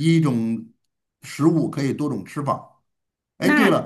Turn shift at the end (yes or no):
no